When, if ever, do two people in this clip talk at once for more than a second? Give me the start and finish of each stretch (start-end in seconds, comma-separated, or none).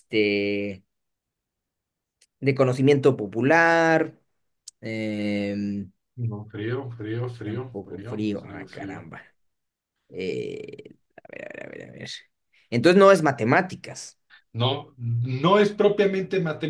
7.4-9.1